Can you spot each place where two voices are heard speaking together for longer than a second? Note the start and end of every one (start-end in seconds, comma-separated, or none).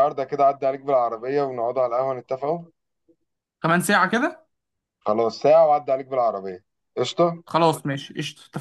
none